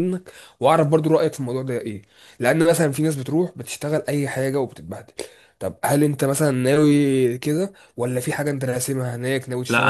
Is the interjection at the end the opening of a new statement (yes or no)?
yes